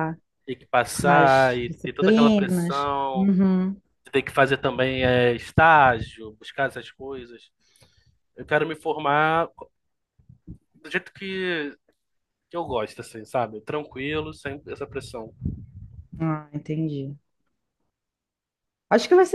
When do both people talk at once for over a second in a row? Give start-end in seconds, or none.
1.0-3.3